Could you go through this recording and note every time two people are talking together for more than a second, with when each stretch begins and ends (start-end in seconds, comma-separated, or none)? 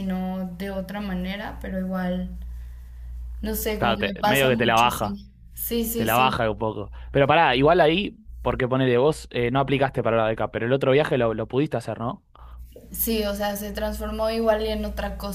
3.8-5.2